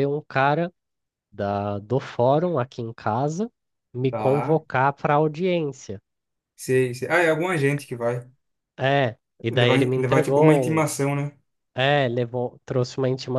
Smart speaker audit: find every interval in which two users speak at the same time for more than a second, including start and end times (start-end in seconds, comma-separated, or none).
9.5-10.9